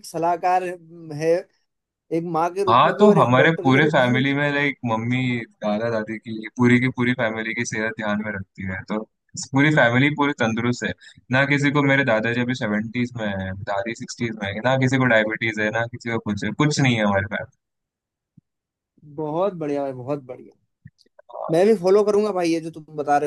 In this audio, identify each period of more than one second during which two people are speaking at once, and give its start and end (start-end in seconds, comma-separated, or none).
2.7-4.2